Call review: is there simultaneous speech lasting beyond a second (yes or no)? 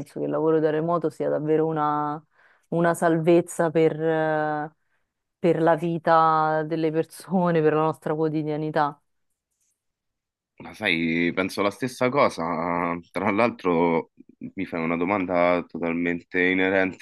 no